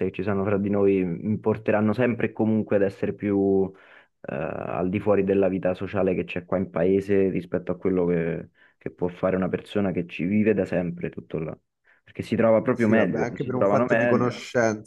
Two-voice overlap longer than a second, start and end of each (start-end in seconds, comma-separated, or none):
12.7-14.3